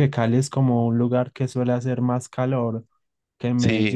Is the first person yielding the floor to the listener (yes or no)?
yes